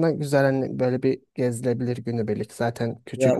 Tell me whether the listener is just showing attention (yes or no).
no